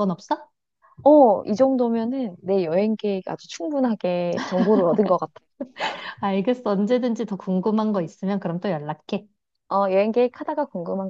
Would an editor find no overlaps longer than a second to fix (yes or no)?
yes